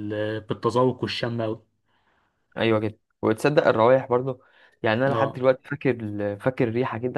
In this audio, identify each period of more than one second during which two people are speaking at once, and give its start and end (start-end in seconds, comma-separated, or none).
none